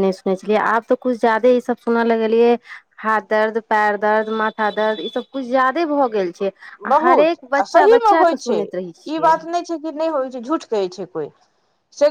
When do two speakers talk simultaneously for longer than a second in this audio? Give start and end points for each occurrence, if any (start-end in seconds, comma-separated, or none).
7.0-9.4